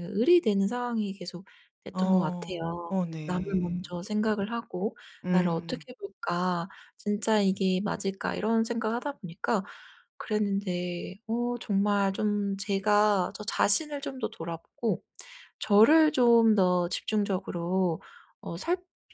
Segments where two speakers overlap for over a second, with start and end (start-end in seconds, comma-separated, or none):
1.9-3.9